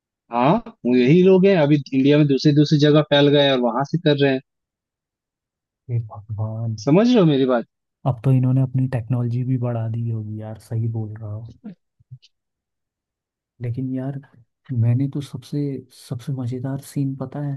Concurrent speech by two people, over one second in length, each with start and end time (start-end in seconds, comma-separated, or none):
none